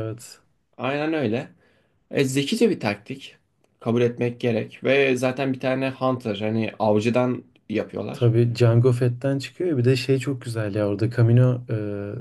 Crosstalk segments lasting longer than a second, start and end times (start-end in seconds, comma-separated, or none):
none